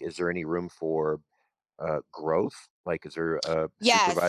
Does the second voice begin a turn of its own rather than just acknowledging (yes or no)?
yes